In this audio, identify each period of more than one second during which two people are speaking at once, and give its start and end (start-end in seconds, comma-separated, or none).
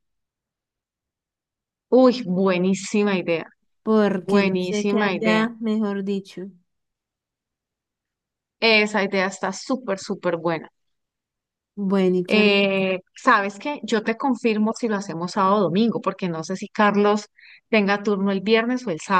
4.2-5.5